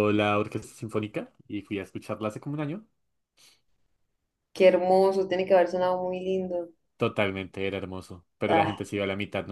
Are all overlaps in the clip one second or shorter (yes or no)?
yes